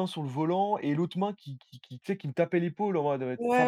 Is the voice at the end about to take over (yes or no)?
yes